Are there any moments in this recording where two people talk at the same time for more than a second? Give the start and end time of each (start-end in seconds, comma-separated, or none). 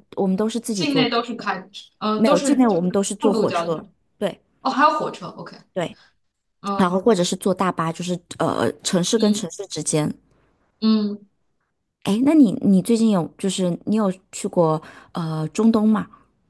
2.1-3.8